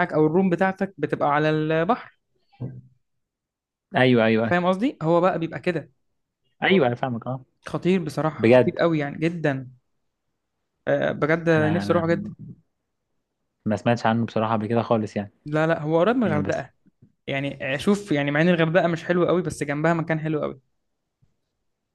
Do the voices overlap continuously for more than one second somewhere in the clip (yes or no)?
no